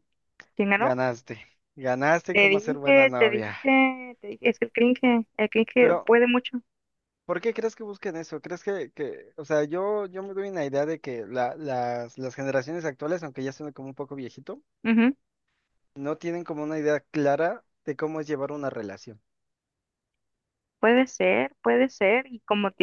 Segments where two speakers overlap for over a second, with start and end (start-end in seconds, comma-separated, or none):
2.3-3.6